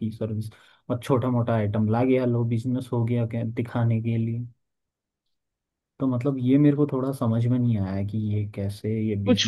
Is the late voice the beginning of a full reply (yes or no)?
yes